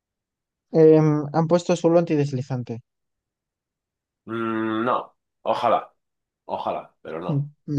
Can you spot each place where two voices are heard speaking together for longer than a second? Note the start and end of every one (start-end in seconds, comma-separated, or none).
none